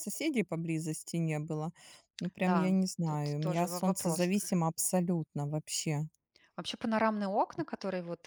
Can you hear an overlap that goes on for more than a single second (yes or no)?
yes